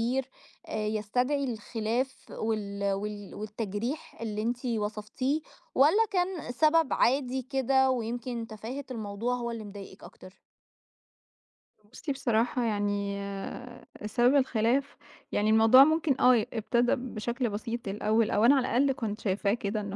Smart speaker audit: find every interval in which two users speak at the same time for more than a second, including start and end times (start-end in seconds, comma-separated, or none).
none